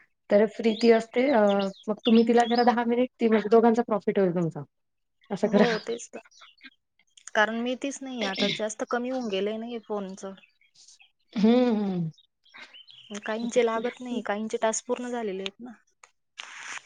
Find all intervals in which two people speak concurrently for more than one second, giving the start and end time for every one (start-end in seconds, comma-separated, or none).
none